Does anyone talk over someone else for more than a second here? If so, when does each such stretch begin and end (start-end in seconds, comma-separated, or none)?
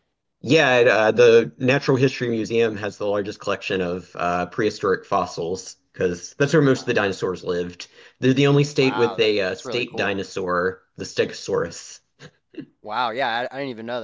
8.8-10.1